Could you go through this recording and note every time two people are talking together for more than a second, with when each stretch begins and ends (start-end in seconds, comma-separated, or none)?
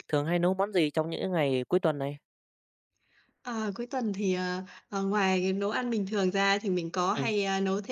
none